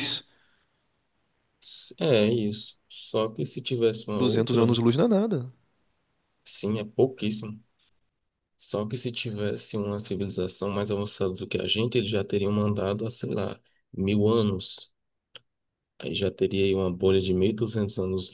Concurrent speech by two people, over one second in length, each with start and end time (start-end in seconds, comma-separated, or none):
none